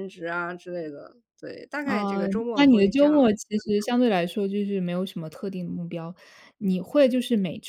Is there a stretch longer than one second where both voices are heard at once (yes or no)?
yes